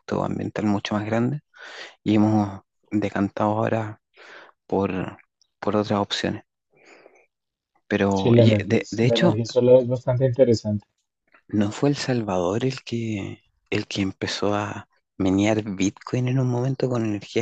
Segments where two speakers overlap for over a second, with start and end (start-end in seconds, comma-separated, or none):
8.1-9.4